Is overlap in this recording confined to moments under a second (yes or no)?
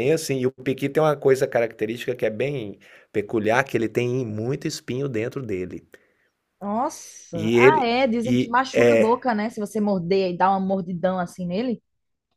no